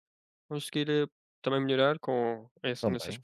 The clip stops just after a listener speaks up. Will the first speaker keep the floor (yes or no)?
yes